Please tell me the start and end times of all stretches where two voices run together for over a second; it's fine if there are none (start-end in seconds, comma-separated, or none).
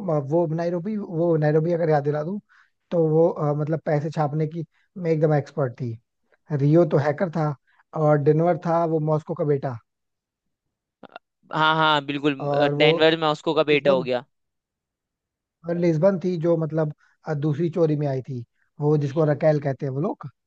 none